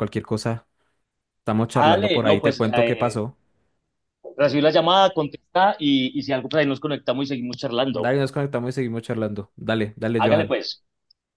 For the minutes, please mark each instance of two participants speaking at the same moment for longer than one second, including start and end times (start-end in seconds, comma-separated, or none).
1.7-3.2